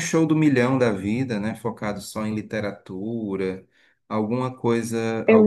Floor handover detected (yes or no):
no